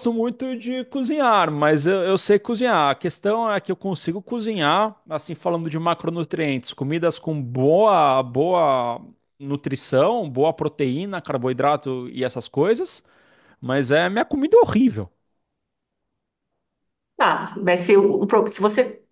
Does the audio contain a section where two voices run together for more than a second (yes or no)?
no